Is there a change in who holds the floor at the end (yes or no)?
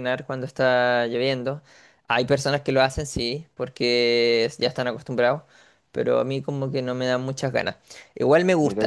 no